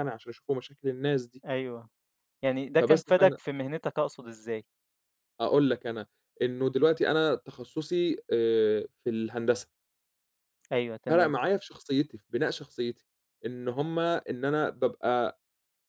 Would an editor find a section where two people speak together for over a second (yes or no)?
no